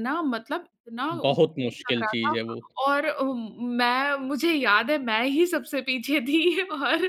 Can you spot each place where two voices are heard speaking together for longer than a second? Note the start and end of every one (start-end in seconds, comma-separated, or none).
1.1-2.4